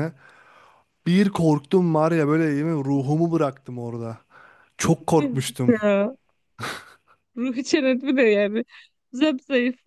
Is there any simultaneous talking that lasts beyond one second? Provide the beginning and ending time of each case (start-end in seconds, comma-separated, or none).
none